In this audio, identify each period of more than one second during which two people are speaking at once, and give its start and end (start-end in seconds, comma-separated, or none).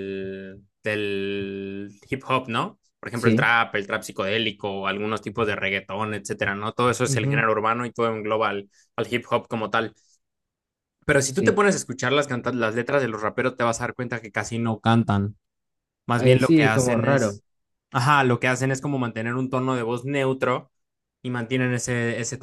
16.2-17.4